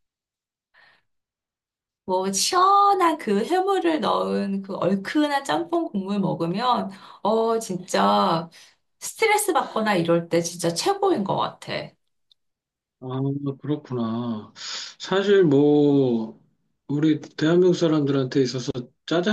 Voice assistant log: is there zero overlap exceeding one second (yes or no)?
yes